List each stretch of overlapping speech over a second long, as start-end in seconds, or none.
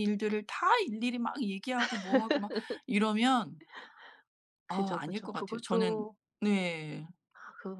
4.7-6.0